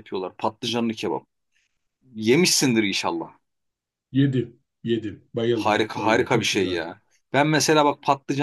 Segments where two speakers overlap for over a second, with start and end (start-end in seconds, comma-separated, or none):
5.5-6.8